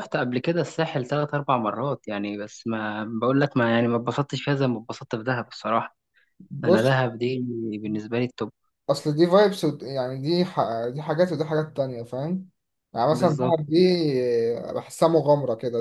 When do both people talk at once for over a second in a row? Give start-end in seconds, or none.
none